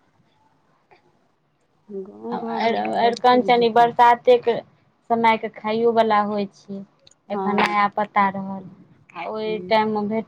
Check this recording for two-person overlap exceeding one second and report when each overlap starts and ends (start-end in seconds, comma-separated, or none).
2.4-3.9